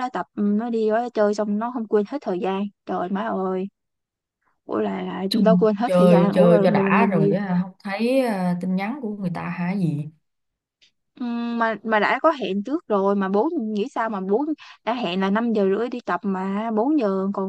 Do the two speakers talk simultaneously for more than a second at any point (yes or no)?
yes